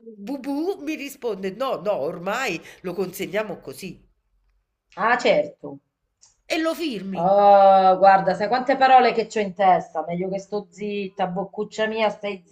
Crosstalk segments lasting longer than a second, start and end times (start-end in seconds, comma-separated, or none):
none